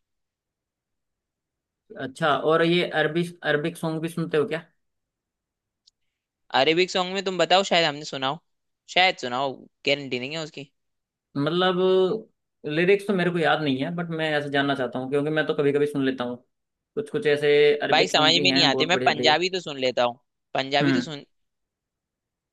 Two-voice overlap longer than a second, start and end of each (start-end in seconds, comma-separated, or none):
17.9-19.4